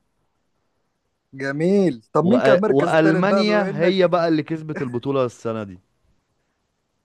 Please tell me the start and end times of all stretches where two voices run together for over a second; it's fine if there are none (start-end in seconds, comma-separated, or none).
2.2-4.1